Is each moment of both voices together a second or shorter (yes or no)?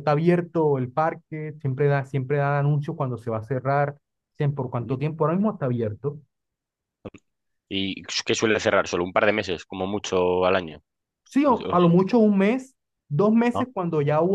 yes